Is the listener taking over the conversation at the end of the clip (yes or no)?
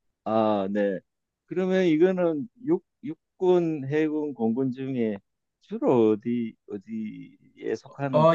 yes